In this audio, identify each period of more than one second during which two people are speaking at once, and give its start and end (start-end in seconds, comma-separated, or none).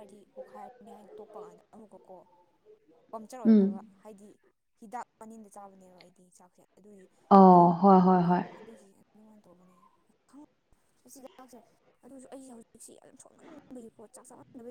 none